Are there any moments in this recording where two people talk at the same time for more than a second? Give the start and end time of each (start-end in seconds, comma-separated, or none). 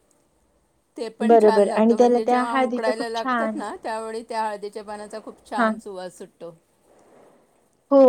1.3-3.6